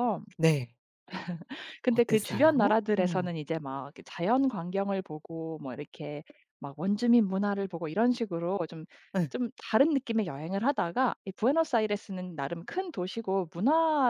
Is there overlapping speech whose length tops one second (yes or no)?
yes